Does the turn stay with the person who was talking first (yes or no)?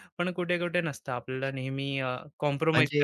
no